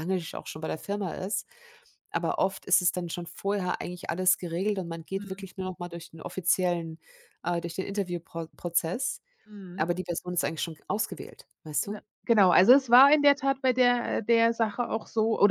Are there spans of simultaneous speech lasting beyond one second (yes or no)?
no